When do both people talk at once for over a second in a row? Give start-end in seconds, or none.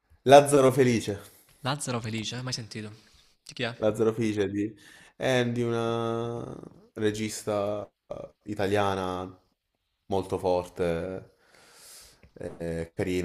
none